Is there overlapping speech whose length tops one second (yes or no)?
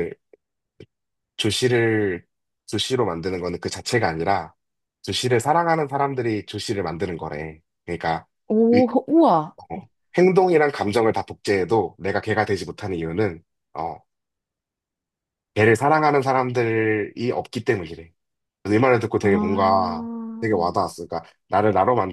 yes